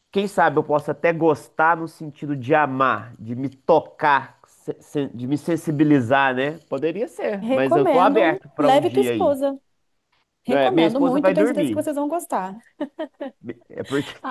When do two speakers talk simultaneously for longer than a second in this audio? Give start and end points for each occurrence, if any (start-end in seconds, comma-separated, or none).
7.4-9.4, 10.5-11.8